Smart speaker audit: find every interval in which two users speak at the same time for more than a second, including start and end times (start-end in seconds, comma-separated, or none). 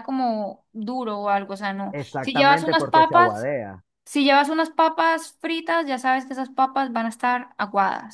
1.9-3.5